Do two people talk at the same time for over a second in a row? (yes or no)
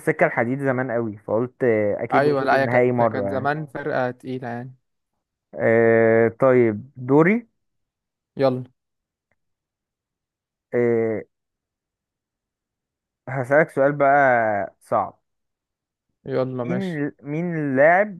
yes